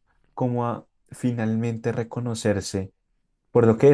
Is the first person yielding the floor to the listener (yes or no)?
no